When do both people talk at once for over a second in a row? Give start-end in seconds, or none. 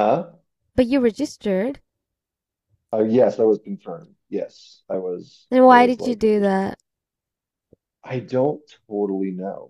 5.5-6.7